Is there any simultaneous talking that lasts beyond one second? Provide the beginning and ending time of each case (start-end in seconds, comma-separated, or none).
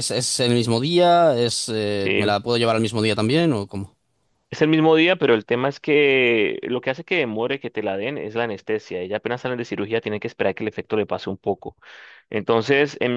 none